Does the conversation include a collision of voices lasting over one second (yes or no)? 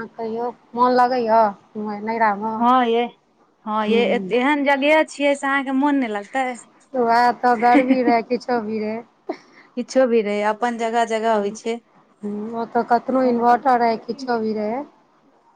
yes